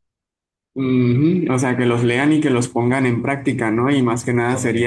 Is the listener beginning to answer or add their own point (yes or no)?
no